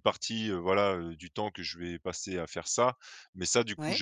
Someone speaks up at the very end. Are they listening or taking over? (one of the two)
listening